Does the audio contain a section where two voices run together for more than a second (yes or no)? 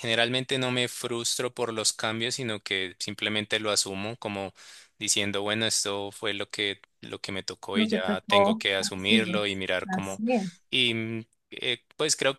yes